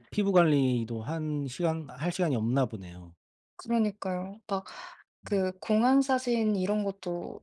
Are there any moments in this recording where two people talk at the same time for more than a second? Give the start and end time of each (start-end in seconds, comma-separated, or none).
none